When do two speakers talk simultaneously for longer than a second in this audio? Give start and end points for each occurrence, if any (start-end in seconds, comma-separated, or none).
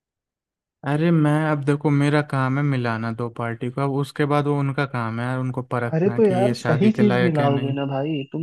5.9-7.7